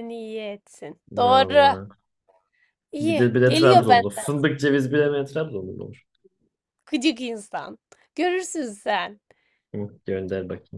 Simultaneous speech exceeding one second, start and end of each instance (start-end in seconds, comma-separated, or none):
3.0-4.3